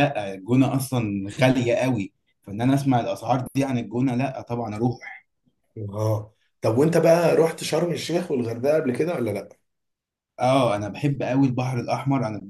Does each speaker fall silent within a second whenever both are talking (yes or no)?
yes